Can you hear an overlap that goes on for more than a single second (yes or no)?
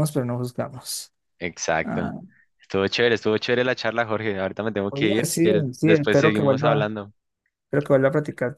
yes